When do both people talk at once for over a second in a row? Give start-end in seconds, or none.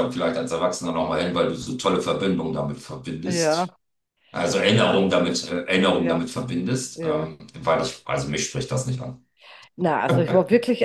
none